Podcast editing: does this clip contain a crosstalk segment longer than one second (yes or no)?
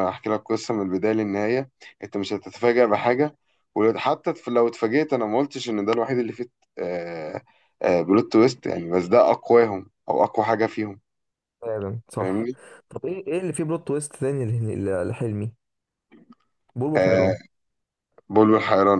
no